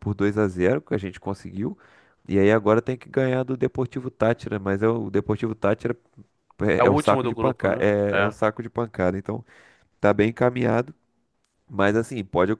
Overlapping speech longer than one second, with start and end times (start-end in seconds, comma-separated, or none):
6.8-8.3